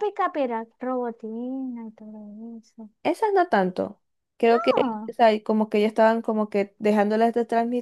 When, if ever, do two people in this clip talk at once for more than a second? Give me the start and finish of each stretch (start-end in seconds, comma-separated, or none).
none